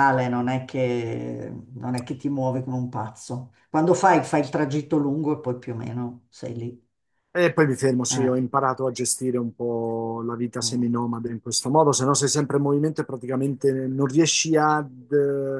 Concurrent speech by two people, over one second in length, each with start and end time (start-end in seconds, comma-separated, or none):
none